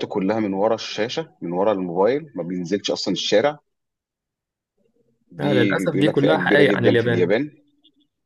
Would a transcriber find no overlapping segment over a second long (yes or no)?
no